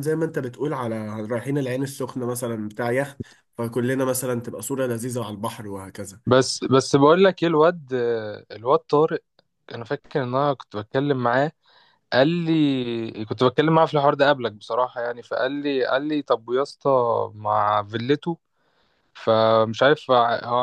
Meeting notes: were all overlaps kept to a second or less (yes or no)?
yes